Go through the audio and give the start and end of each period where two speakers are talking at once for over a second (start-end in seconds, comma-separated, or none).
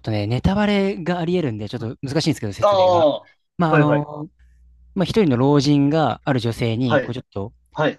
none